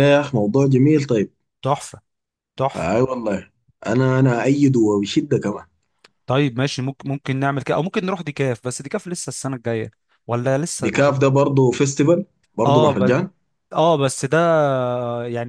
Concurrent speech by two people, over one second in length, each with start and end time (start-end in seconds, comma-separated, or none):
none